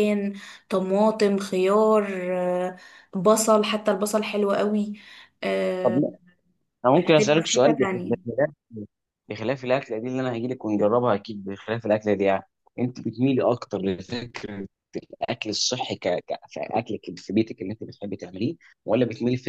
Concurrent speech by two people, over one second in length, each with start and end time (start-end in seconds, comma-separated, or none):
7.0-8.3